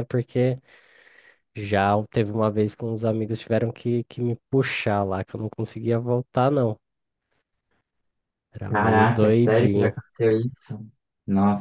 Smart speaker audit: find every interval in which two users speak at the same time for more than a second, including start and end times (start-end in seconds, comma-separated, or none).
8.7-10.0